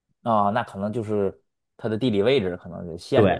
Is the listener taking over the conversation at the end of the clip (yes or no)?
yes